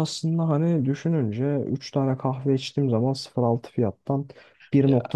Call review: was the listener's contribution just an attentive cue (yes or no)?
yes